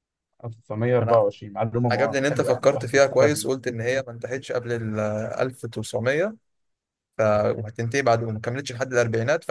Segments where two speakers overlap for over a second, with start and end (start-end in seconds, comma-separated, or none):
1.9-3.5